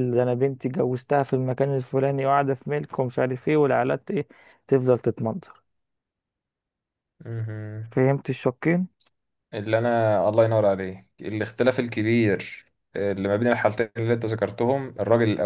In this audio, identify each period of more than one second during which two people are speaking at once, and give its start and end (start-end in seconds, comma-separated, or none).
none